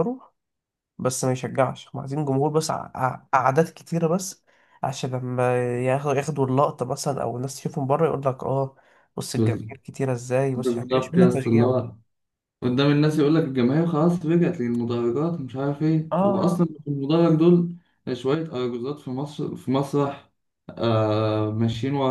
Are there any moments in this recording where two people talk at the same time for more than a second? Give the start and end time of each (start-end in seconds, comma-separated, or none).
10.6-11.9